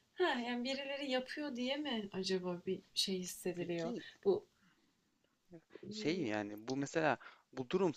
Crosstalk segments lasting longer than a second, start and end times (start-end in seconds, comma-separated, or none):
none